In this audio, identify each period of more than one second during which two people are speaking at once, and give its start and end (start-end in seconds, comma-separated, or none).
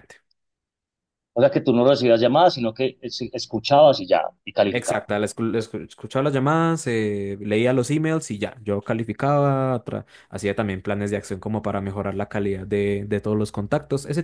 none